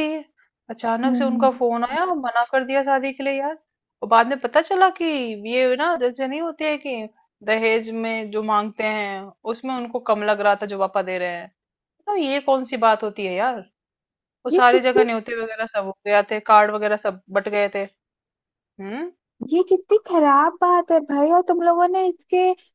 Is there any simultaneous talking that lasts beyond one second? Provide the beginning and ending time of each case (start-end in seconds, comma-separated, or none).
none